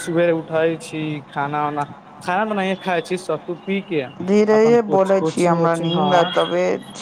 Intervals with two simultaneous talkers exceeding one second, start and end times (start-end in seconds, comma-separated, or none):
4.6-6.2